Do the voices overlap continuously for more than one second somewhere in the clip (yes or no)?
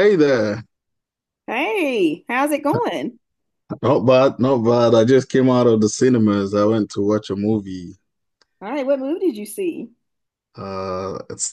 no